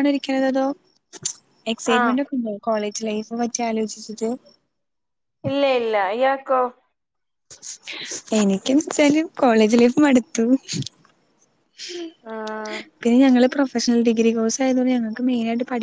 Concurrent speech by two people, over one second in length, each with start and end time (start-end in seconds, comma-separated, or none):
none